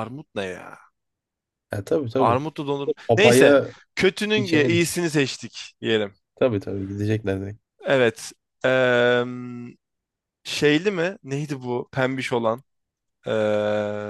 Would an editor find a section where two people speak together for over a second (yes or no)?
no